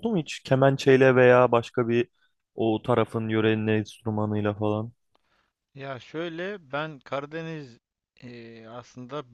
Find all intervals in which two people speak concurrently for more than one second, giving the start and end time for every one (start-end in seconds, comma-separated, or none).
none